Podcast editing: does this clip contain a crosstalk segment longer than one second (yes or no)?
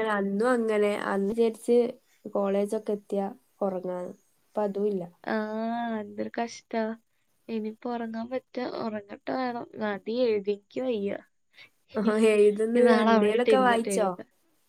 yes